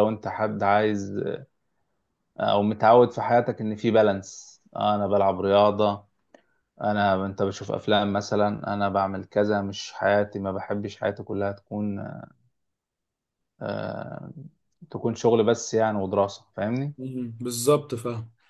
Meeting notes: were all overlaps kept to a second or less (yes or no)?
yes